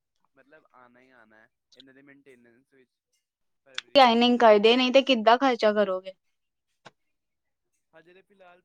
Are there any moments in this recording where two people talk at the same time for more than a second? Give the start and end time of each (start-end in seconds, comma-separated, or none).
none